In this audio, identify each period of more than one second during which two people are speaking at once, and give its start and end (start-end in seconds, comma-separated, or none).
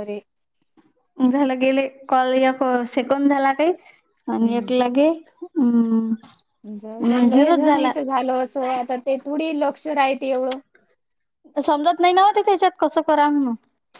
none